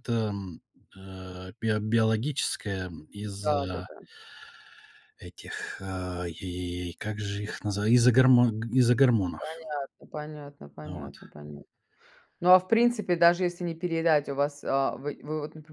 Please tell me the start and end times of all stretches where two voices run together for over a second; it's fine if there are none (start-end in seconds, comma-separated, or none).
none